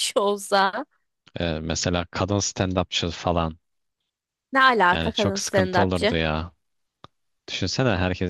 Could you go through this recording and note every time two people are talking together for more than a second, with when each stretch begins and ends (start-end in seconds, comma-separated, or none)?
4.9-6.2